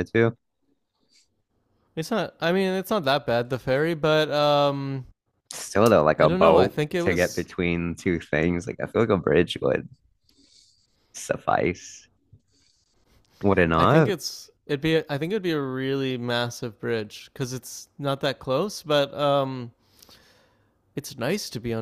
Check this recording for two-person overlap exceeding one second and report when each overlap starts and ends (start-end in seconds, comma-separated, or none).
6.2-7.5